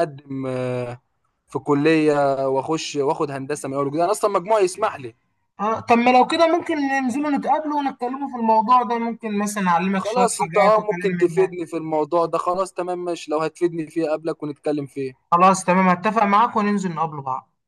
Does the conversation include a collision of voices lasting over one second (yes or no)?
yes